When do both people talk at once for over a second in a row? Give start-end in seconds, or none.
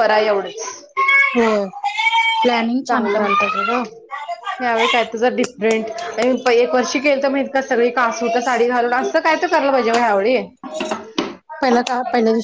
none